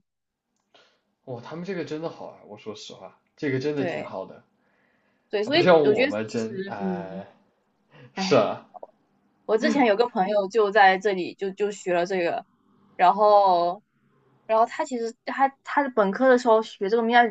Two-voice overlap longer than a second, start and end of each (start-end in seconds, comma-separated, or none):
5.4-7.2